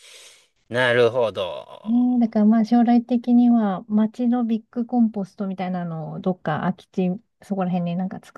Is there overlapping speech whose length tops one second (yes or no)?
no